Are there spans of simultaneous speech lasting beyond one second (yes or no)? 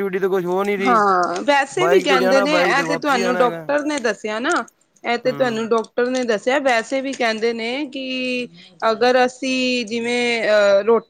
yes